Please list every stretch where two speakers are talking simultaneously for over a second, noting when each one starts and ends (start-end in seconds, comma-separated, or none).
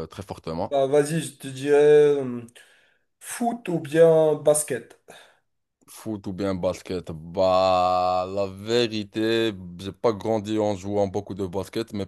none